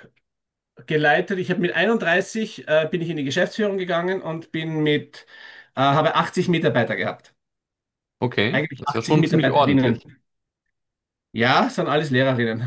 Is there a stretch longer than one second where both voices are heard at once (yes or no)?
yes